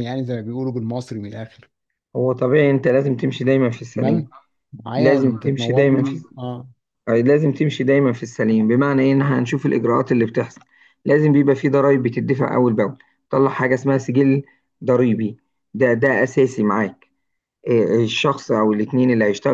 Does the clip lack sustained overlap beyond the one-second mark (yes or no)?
no